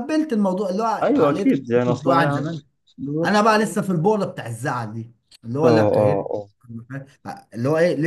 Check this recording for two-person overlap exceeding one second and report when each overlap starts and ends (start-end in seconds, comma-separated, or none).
1.0-2.4